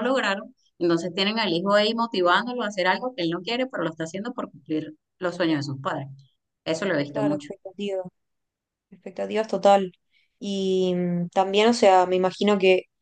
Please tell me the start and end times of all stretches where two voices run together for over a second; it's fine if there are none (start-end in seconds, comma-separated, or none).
none